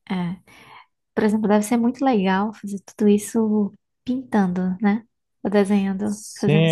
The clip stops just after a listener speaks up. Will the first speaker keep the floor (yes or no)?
no